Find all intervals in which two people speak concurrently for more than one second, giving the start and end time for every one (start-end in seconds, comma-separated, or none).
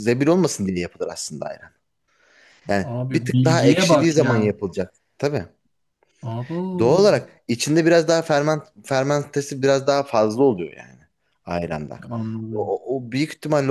2.9-4.5